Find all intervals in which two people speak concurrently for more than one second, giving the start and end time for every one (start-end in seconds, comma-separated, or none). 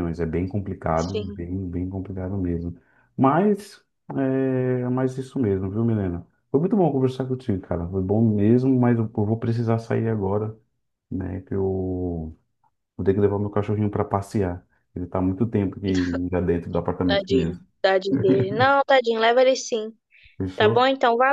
none